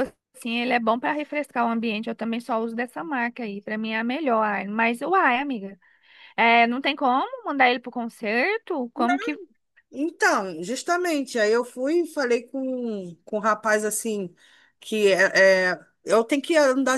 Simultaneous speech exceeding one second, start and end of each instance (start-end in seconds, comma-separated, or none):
none